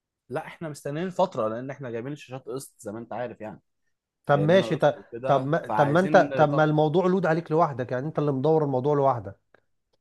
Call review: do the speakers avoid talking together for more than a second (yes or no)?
no